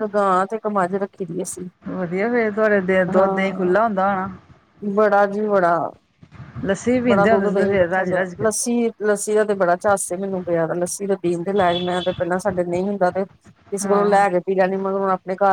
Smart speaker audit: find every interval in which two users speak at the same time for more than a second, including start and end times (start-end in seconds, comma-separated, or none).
7.1-8.4